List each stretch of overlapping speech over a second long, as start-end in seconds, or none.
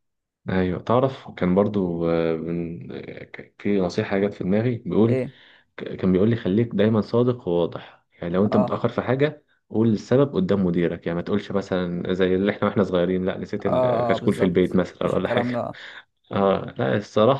13.7-15.7